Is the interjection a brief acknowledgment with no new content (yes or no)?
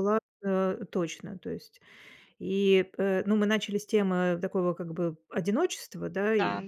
yes